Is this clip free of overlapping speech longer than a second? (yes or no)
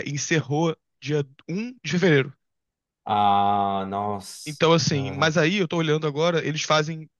yes